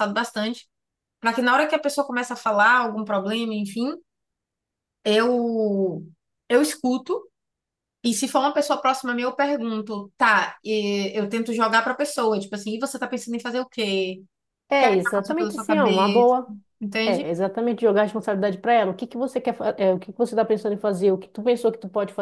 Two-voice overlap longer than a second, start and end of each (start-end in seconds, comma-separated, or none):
14.7-16.3